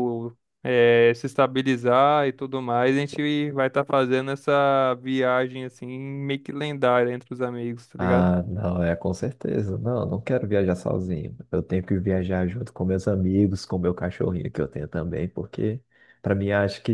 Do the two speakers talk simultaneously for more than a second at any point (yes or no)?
no